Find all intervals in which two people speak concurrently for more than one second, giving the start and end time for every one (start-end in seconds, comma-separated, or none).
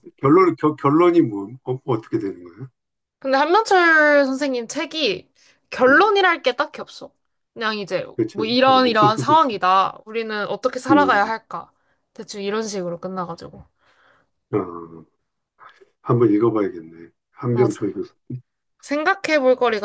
8.1-9.6